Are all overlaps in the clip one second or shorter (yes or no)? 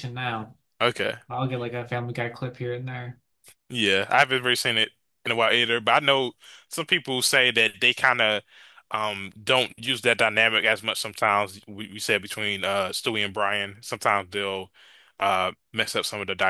yes